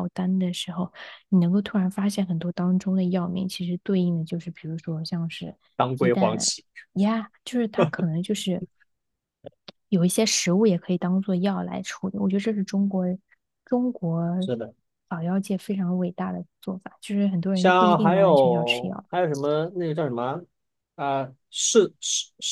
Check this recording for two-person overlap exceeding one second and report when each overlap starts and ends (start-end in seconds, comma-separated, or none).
17.5-19.0